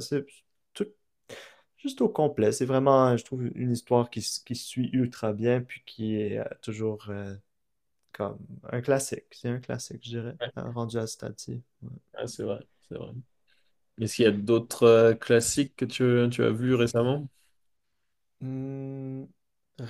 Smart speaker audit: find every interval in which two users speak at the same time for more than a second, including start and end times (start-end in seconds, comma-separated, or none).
none